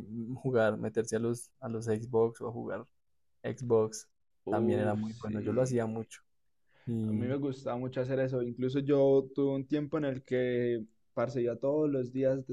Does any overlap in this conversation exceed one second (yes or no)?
yes